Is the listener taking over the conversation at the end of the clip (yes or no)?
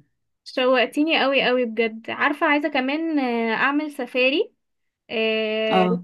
no